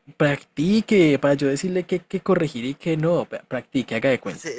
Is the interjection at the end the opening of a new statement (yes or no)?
yes